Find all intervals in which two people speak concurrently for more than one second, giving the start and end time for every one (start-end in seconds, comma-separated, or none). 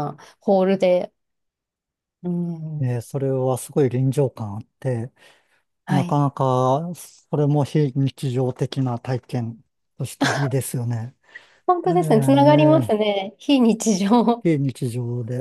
11.9-13.1